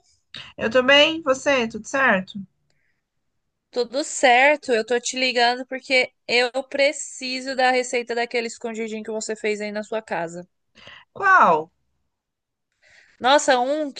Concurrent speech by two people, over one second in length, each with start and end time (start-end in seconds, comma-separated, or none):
none